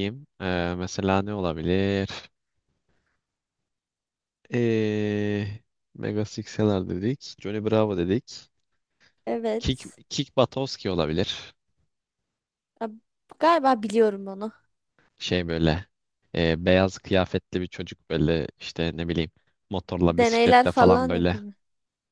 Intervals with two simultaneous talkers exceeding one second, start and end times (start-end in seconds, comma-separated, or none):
20.1-21.4